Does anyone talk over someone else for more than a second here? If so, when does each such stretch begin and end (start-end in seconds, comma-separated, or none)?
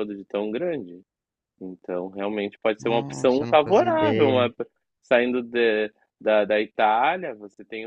2.8-4.5